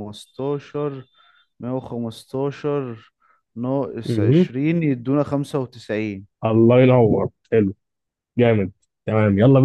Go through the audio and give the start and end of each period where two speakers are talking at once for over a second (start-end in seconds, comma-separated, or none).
none